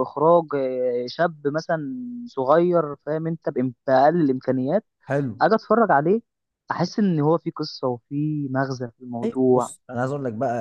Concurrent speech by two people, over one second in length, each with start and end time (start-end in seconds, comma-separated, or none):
none